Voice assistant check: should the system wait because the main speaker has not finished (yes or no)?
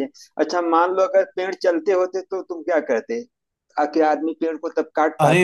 no